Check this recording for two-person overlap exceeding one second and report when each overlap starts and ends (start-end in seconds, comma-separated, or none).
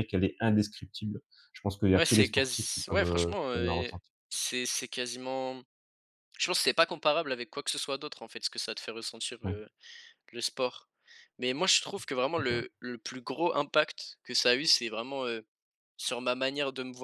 1.9-4.1